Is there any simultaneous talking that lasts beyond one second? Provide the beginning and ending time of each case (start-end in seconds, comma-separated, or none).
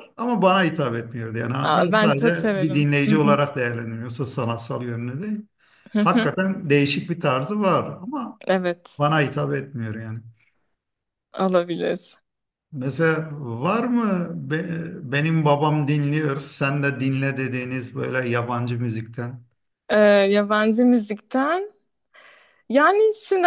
1.6-3.4